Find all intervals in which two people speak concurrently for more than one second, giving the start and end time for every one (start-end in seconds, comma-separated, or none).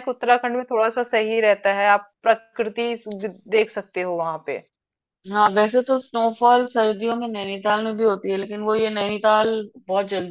none